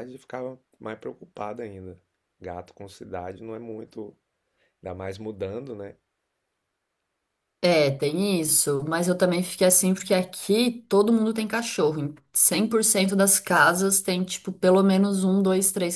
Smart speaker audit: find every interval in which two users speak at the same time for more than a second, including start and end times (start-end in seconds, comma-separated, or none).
none